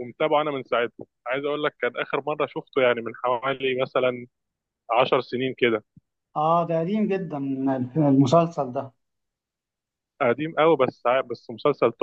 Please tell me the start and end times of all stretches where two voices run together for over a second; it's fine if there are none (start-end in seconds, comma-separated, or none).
none